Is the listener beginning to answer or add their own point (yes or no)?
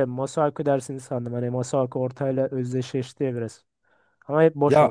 yes